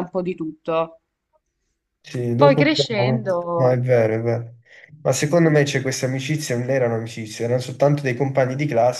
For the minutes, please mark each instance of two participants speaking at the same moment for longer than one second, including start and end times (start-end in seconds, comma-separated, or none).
none